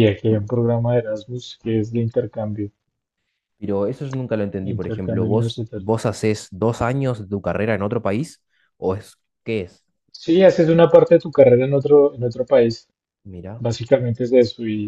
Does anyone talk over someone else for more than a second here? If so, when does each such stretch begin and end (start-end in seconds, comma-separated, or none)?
4.6-5.9